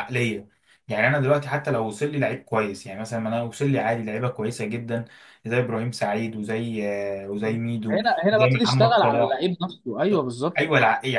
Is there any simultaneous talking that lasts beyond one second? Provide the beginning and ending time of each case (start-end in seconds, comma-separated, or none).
7.9-9.4